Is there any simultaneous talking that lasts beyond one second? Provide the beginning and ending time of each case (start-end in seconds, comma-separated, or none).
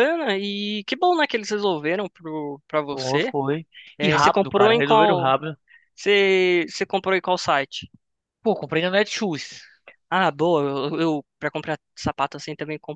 4.0-5.3